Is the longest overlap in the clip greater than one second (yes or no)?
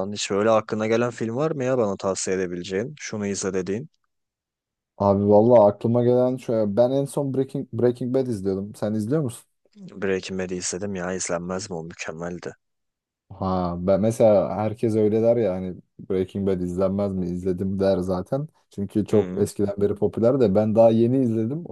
no